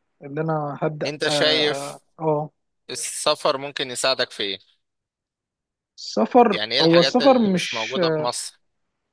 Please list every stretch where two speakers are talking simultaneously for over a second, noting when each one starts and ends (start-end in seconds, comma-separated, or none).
6.5-8.0